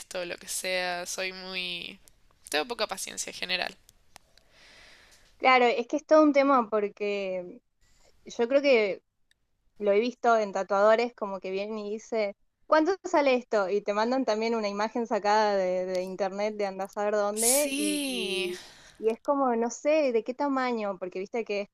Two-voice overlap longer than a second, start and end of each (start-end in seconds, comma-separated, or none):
17.3-18.5